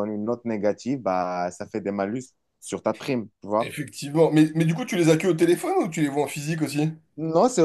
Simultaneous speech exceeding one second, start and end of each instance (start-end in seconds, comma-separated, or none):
none